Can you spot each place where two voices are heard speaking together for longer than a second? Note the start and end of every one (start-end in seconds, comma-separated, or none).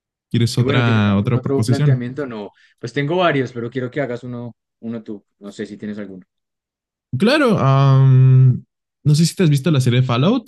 0.6-2.1